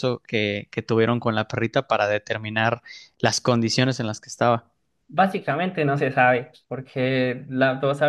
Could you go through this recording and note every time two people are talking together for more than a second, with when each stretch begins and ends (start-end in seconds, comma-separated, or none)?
none